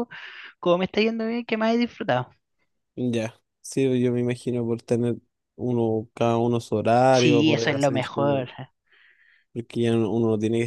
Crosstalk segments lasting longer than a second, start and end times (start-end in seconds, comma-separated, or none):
7.1-8.5